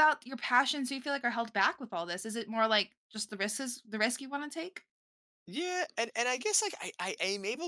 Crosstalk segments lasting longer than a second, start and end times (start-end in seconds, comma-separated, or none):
none